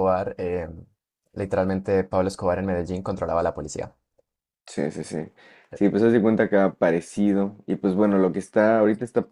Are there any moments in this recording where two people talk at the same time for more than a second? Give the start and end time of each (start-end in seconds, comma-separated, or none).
none